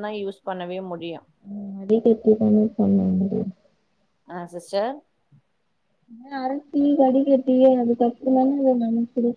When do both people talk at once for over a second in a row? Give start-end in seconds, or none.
none